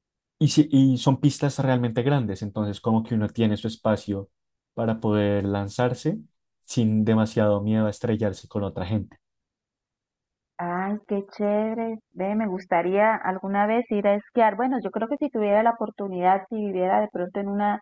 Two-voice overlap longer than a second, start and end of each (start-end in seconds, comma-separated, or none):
none